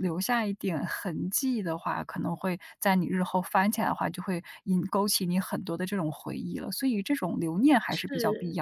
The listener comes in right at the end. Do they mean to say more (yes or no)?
yes